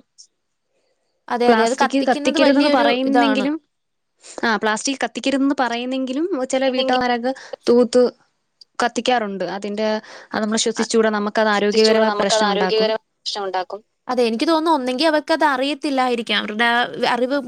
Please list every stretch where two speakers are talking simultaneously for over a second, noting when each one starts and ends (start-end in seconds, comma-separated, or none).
1.5-3.5